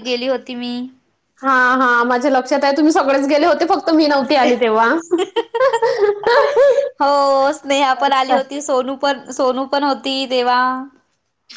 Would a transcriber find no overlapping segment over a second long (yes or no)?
yes